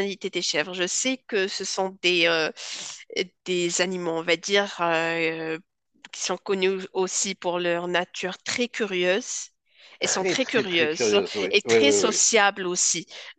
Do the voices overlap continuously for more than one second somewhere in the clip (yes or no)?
yes